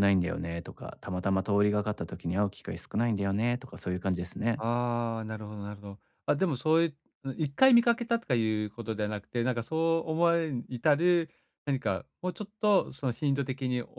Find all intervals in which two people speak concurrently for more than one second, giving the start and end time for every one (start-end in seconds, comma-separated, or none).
none